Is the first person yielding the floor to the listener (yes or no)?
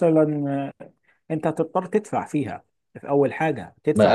yes